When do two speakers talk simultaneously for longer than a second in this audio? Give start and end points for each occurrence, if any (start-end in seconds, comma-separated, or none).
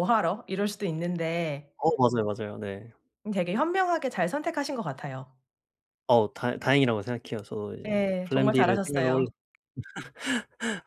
7.9-9.3